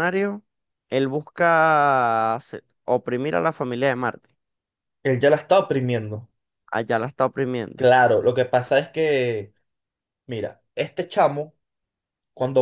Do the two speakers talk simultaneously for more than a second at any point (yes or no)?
no